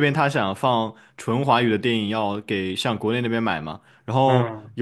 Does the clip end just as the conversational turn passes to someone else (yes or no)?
no